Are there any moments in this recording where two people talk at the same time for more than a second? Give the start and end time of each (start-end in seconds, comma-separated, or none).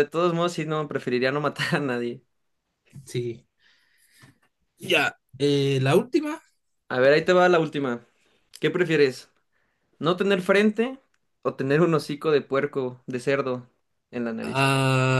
none